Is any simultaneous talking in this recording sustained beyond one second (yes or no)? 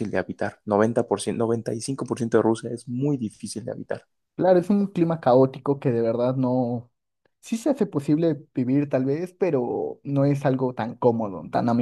no